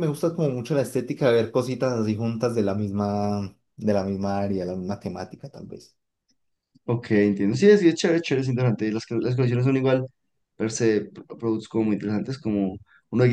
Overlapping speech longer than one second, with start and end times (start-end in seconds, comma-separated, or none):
none